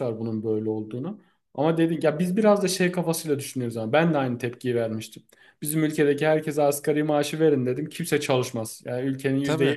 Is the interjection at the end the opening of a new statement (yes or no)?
no